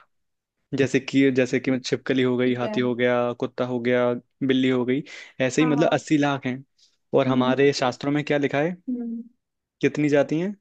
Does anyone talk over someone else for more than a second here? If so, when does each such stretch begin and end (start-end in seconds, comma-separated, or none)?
none